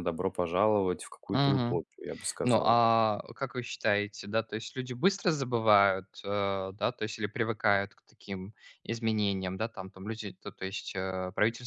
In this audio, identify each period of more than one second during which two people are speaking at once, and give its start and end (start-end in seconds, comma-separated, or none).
none